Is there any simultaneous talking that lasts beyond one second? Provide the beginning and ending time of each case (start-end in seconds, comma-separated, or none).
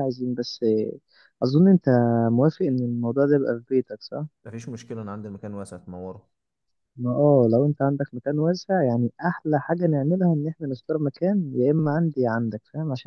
none